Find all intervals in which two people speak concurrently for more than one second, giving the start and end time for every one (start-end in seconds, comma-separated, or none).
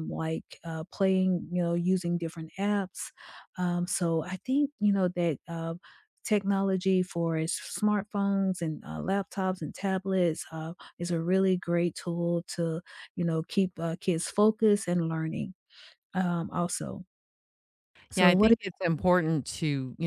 none